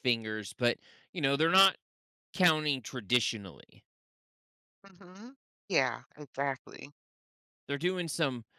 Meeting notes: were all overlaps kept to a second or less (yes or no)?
yes